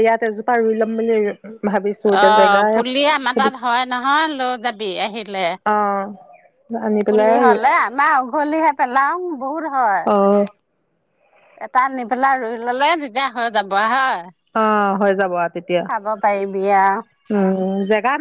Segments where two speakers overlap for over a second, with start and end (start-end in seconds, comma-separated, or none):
2.2-3.5